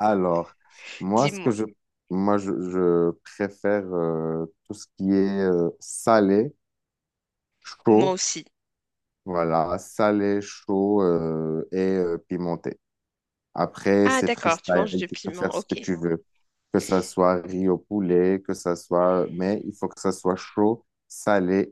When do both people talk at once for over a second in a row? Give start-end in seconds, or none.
14.0-15.8